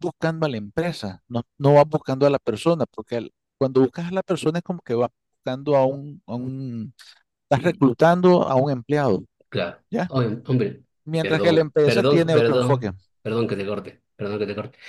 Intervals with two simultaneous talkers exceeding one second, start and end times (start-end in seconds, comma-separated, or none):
11.2-12.9